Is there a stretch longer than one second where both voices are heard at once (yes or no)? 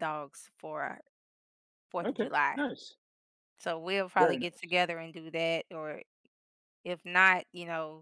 no